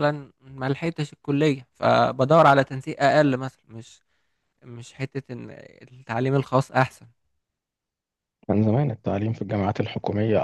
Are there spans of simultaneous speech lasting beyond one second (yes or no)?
no